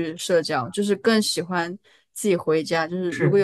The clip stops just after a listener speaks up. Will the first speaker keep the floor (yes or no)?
yes